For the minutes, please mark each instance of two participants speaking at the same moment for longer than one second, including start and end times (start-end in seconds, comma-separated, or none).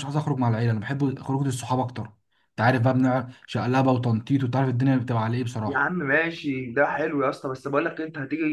none